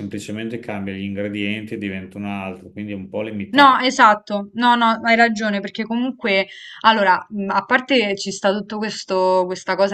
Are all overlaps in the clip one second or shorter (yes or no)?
yes